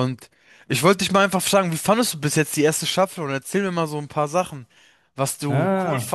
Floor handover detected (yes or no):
no